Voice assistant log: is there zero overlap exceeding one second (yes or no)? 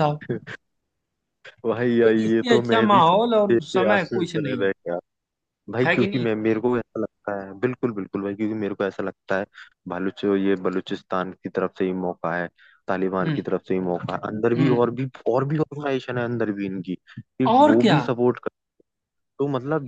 no